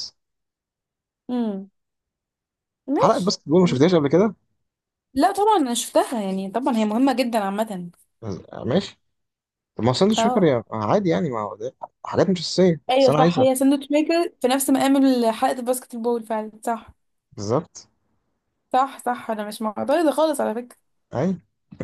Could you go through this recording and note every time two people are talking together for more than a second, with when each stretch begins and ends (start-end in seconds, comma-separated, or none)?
none